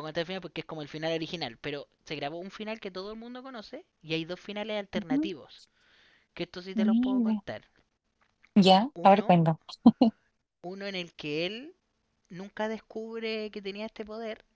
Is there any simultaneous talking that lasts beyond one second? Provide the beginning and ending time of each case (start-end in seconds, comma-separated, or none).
none